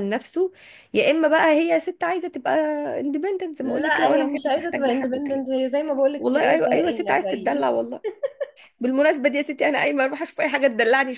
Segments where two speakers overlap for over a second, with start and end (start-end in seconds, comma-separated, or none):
3.6-5.5, 6.2-7.7